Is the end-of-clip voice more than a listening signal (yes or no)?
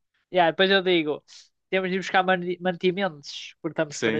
yes